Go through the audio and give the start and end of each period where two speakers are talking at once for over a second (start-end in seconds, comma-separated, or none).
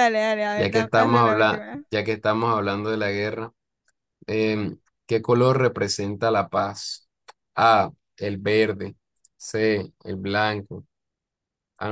0.6-1.8